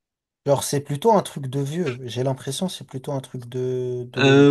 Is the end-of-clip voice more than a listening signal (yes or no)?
yes